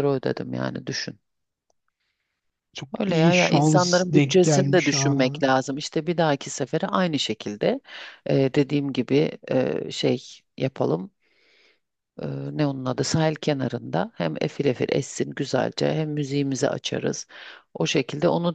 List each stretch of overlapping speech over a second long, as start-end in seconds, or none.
3.0-5.3